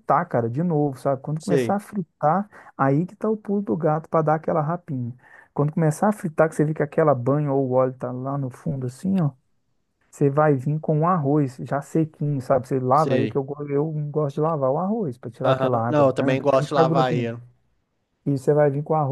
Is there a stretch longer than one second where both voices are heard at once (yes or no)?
yes